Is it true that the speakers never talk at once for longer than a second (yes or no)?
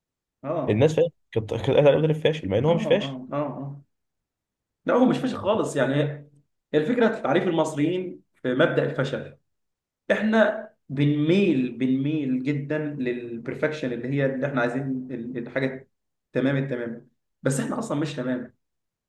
yes